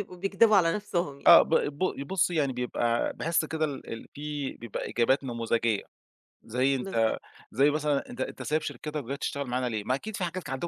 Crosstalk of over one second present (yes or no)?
no